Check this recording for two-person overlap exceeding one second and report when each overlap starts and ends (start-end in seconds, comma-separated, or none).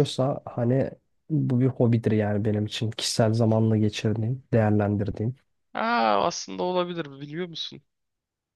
none